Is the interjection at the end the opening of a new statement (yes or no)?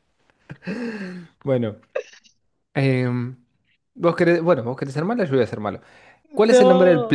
no